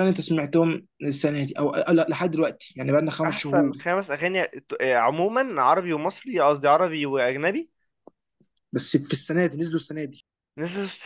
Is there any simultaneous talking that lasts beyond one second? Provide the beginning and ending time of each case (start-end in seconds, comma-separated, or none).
none